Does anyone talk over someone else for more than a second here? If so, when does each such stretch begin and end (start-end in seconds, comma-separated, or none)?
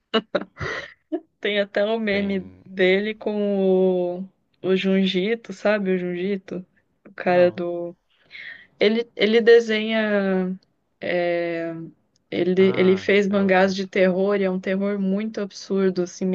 12.6-13.9